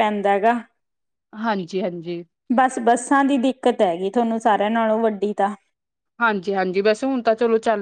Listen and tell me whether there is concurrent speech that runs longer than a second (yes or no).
no